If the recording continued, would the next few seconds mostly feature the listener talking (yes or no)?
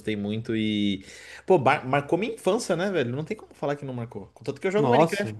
no